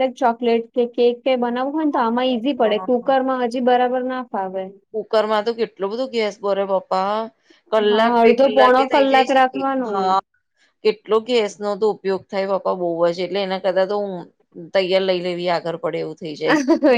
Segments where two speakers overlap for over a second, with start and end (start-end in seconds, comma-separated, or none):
7.9-10.1